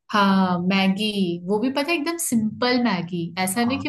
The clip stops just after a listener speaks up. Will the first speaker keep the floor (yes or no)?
yes